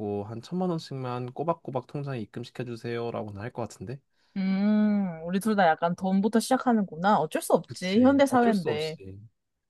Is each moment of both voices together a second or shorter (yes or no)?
no